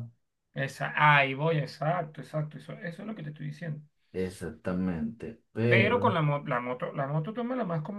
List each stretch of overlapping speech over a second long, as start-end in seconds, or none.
none